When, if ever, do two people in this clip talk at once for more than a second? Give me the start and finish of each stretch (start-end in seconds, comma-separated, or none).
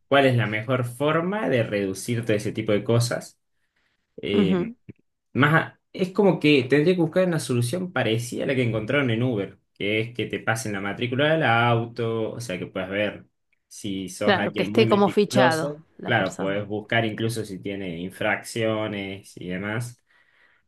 14.2-16.6